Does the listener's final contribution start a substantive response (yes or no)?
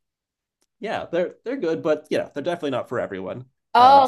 yes